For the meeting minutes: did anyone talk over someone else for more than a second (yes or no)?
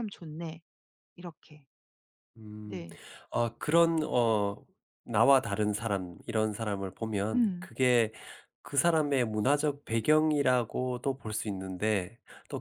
no